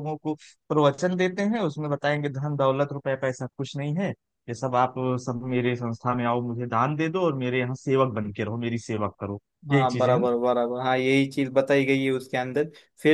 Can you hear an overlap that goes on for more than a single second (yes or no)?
no